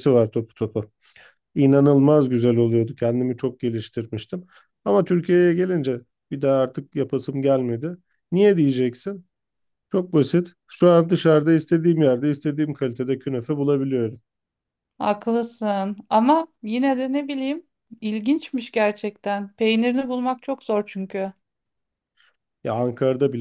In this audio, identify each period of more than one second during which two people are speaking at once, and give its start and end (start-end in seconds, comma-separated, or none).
none